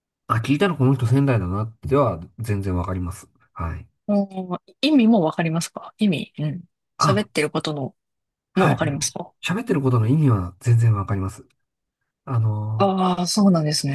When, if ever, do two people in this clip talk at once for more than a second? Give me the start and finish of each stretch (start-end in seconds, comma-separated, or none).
none